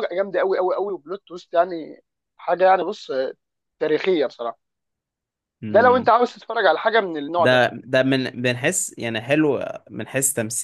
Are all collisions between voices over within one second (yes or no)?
yes